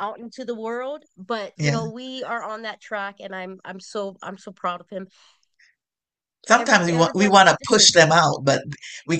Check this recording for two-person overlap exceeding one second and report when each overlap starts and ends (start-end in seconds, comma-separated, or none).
6.5-7.9